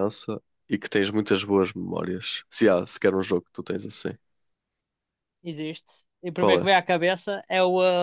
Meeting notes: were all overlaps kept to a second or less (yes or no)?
yes